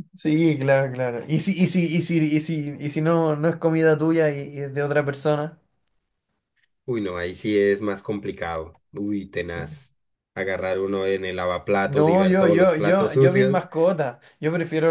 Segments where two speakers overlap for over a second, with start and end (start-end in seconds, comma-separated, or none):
11.8-13.6